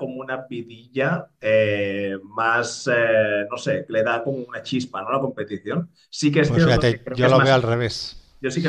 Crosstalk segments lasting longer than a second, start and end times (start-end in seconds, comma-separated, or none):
6.4-7.8